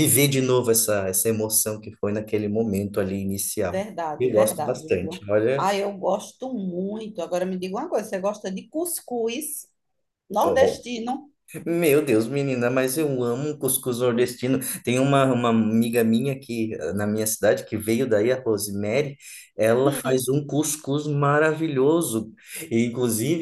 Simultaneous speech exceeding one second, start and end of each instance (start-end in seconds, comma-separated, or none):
3.7-5.7